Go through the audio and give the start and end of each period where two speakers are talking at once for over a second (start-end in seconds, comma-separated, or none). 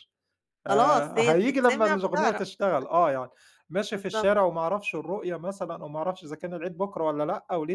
0.7-2.4